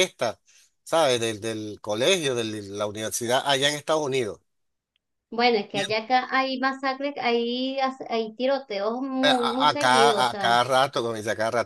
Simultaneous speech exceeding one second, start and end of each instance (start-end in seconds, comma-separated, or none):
9.2-10.6